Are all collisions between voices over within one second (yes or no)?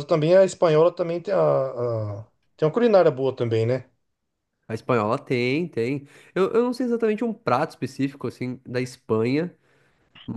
yes